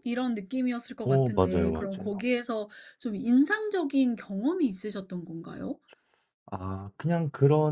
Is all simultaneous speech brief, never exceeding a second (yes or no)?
no